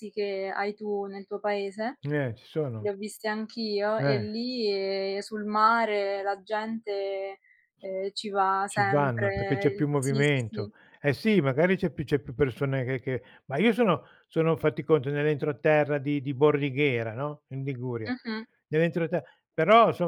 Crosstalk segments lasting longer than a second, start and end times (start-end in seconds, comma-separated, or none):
8.7-10.7